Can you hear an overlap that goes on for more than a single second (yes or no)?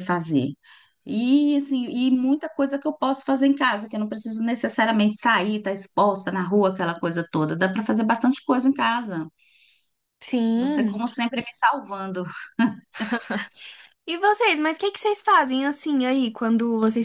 no